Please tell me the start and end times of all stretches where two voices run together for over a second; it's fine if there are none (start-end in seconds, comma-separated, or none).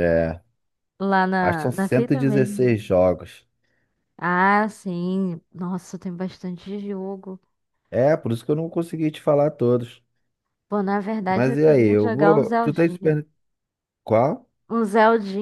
1.4-2.9, 11.3-13.1